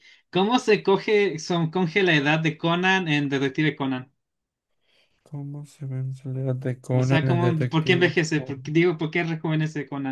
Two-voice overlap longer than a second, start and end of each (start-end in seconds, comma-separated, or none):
6.9-8.6